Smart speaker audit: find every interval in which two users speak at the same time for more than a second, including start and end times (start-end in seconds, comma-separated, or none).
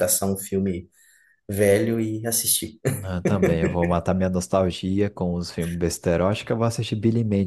none